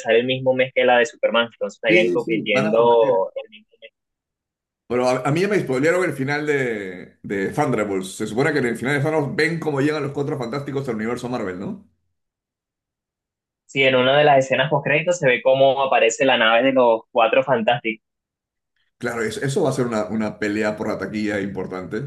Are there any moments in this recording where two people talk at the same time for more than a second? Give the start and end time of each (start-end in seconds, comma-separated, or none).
1.9-3.2